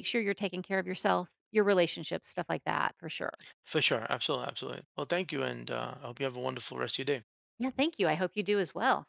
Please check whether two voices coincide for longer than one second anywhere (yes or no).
no